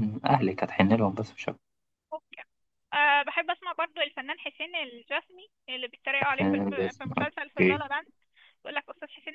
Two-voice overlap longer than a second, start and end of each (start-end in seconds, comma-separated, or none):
6.4-7.8